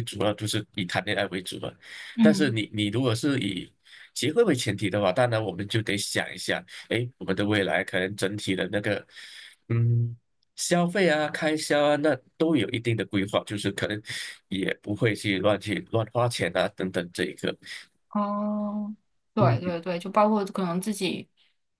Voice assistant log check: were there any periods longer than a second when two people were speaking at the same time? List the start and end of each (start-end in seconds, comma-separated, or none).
none